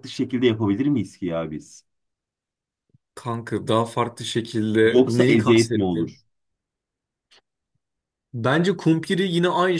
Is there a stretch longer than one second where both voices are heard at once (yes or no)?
yes